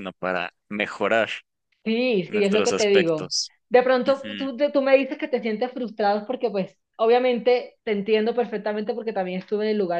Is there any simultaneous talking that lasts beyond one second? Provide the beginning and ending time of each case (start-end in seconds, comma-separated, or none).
2.3-3.5